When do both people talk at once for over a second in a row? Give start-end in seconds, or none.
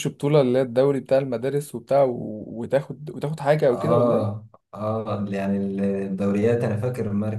none